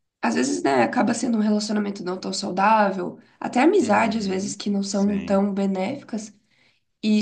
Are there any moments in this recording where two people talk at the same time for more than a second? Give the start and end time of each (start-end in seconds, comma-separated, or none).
3.8-5.4